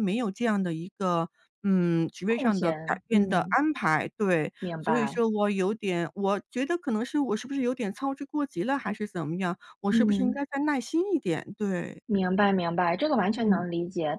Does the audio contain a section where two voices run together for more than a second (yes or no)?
yes